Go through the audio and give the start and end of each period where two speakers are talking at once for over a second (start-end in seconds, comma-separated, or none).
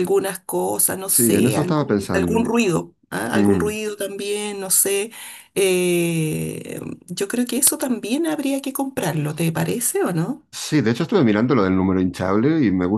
1.1-2.5